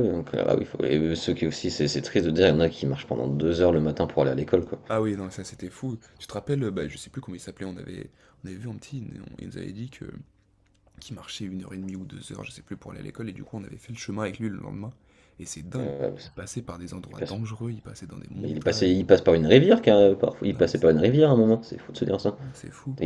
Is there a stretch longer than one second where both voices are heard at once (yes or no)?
no